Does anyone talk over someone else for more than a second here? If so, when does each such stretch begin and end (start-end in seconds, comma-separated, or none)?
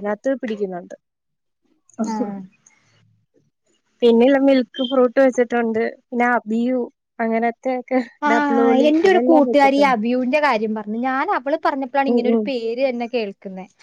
none